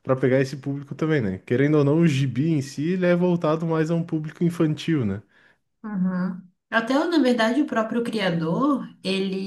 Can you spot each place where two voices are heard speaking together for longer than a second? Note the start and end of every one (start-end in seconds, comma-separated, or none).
none